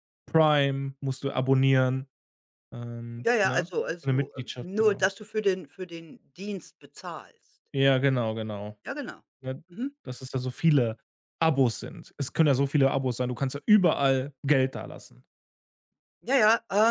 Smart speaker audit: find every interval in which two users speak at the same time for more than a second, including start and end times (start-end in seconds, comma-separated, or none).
3.2-5.1